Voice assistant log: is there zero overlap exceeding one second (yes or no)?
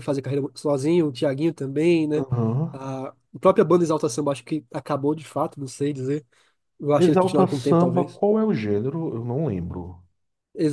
no